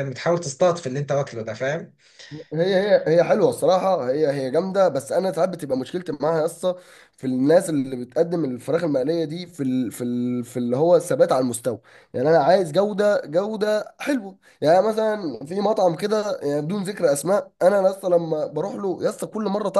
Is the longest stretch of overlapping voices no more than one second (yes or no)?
yes